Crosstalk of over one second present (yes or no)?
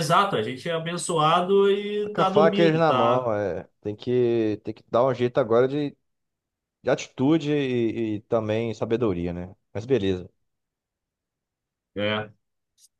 yes